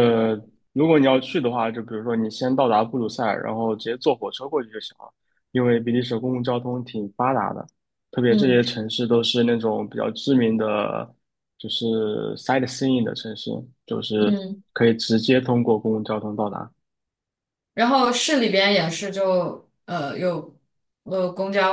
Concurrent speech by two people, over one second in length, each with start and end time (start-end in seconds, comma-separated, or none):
none